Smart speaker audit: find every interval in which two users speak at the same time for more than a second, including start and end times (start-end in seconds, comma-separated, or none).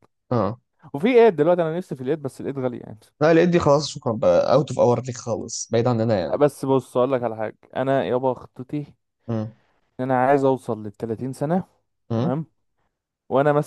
none